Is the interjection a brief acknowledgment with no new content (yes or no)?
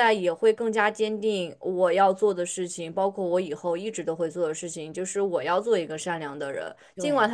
yes